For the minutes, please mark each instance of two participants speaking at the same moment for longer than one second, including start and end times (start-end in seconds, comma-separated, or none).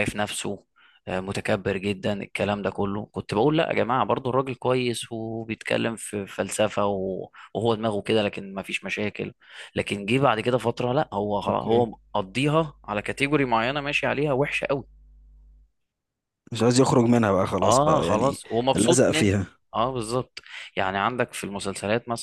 17.6-19.6